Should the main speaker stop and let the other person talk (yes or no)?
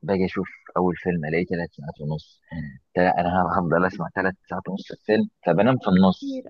no